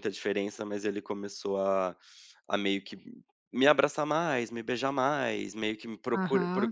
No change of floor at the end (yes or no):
no